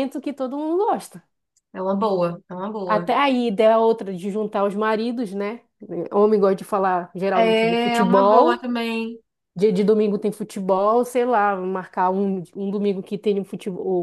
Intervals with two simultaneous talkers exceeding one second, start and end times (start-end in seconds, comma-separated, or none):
7.4-8.7